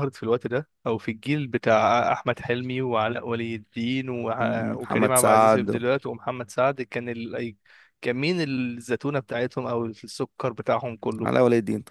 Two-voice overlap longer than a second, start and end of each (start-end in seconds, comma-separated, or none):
4.4-5.8